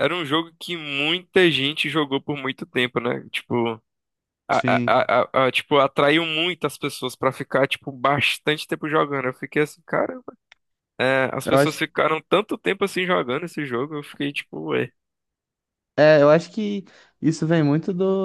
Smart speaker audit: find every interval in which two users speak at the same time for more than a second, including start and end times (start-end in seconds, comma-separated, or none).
none